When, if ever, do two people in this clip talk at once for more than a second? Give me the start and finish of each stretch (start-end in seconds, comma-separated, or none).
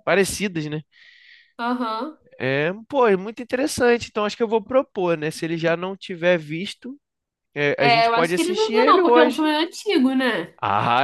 7.8-9.5